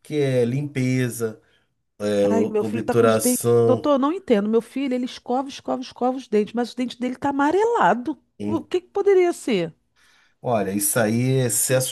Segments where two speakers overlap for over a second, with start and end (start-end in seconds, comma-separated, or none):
2.3-3.9